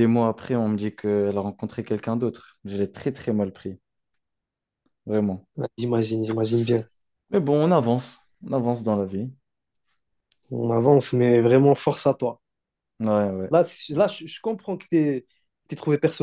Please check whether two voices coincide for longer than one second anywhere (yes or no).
no